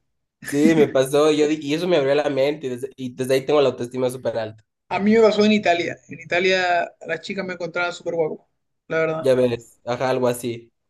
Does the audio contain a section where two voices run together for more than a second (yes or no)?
no